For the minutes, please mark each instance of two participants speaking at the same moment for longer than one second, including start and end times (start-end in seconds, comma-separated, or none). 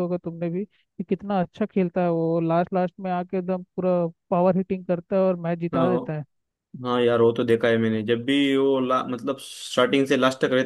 none